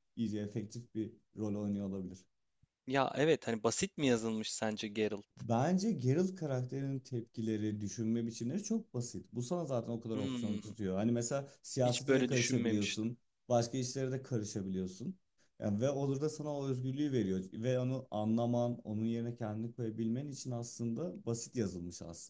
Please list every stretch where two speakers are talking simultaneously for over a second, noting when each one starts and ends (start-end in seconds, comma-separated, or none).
11.8-13.1